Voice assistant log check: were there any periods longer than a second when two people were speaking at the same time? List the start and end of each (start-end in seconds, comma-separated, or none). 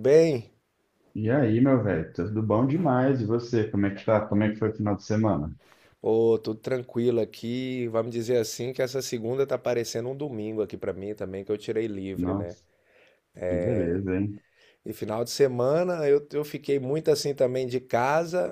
none